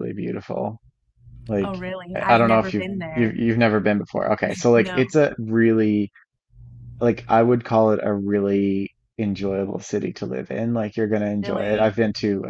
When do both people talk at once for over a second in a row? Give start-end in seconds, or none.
1.6-3.4